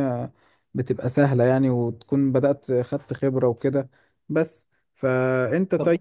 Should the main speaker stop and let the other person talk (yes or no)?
no